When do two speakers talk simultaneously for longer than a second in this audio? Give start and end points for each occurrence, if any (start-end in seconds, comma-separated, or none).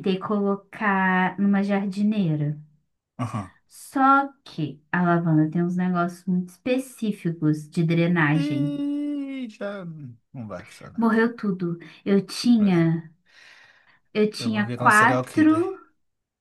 14.4-15.6